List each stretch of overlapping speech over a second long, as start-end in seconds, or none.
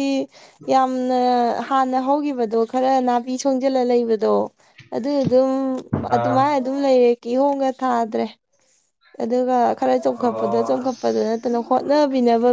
10.2-11.8